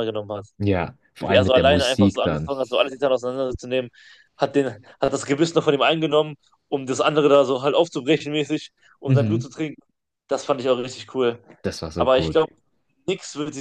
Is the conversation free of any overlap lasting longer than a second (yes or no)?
no